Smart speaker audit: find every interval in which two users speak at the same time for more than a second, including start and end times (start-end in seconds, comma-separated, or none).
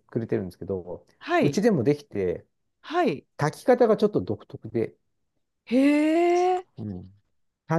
none